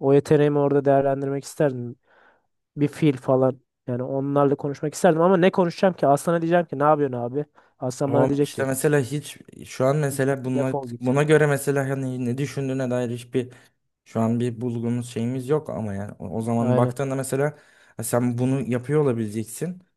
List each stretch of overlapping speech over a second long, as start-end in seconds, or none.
none